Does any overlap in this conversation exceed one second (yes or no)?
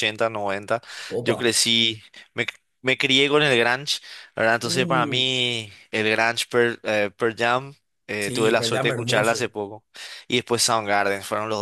yes